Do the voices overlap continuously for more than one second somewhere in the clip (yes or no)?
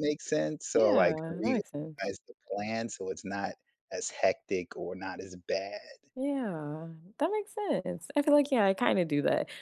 yes